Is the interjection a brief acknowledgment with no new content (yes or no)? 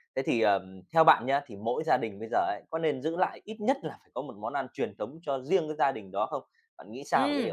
no